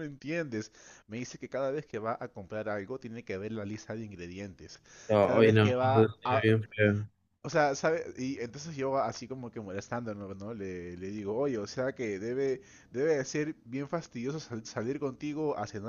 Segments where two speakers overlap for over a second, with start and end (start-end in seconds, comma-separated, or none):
5.2-6.5